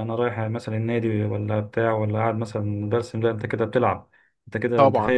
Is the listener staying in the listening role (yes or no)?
no